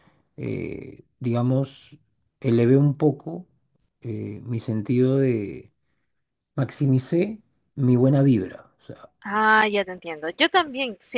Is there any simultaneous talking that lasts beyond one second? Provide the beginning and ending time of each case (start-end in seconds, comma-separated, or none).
none